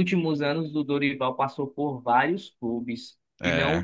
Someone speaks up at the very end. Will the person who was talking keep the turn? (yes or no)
yes